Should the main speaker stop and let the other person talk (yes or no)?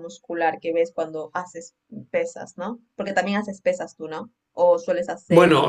yes